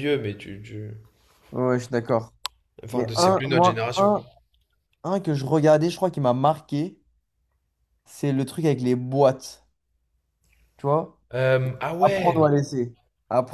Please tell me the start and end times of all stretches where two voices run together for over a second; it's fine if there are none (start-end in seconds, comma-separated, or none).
2.9-4.2